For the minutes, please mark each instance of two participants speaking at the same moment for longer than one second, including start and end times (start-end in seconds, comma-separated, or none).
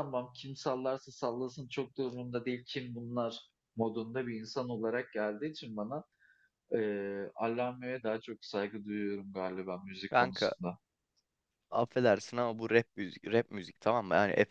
none